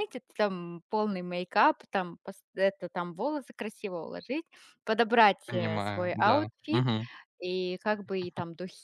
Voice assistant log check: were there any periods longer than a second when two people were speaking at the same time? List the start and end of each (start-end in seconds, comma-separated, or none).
5.5-6.8